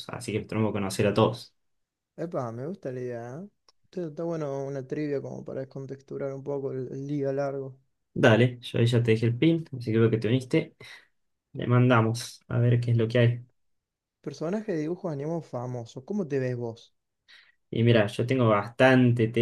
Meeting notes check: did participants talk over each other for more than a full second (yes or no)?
no